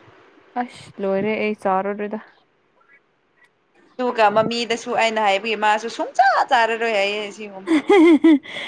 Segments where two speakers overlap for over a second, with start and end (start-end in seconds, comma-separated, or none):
none